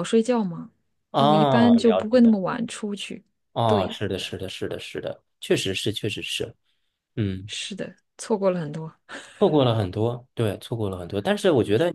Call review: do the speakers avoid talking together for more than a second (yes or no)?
no